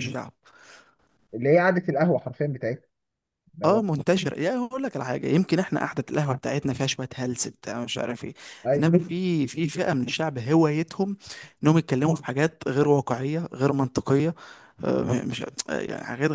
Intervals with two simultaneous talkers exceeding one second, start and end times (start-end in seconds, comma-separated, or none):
none